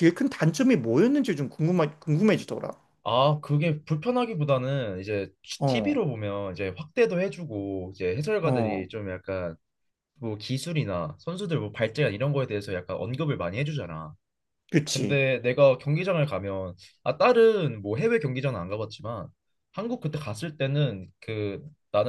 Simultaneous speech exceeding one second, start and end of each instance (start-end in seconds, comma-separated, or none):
none